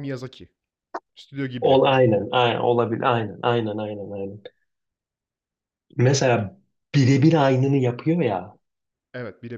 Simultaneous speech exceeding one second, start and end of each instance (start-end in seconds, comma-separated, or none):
none